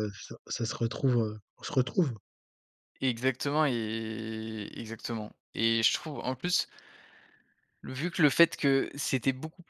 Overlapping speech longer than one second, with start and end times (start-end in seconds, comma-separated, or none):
none